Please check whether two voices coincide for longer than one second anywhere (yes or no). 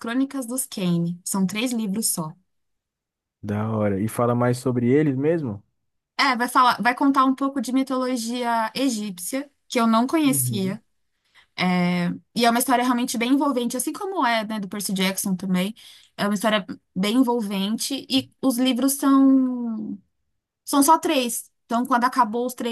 no